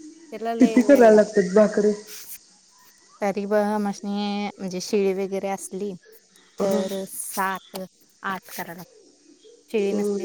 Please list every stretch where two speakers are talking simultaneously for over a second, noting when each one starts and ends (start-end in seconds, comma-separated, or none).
0.6-1.9